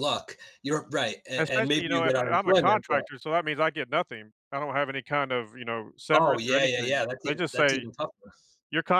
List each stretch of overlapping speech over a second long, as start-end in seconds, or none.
1.4-3.0, 6.1-7.8